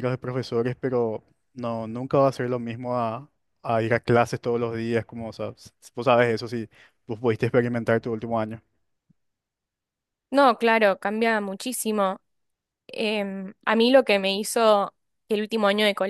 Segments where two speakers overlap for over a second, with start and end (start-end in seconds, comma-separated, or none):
none